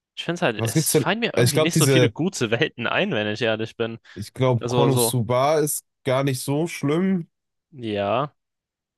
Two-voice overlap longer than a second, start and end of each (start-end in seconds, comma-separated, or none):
0.5-2.1